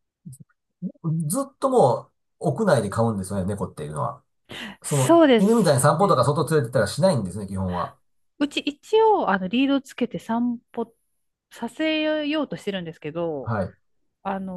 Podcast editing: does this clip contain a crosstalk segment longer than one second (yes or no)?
yes